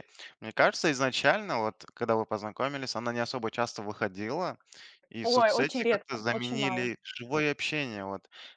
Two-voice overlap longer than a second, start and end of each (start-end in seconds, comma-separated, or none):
5.2-6.9